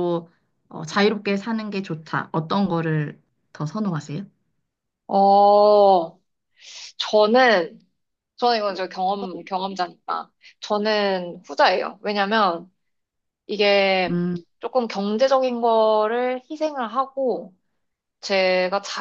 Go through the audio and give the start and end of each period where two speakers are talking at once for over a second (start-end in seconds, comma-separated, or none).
none